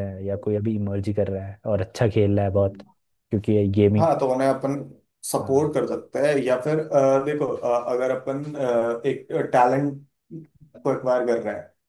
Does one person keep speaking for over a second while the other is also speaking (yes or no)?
no